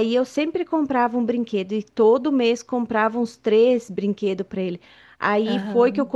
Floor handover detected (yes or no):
no